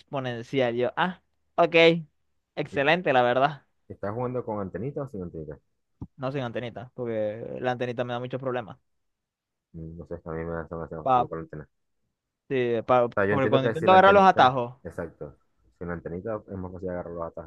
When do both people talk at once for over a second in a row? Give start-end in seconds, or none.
13.1-14.7